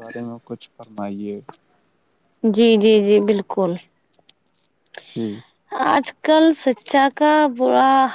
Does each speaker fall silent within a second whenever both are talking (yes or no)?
yes